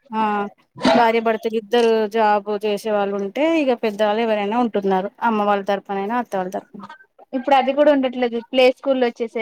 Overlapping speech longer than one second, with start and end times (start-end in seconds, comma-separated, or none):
none